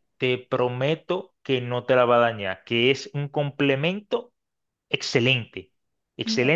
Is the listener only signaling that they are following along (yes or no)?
yes